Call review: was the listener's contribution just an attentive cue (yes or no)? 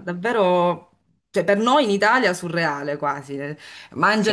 yes